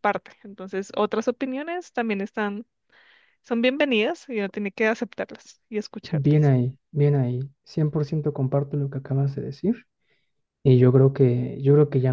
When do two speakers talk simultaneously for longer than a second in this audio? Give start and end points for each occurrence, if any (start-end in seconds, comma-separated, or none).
none